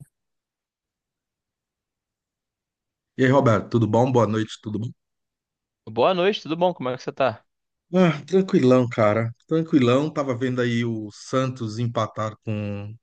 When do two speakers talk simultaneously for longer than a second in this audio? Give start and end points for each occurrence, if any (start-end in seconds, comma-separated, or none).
none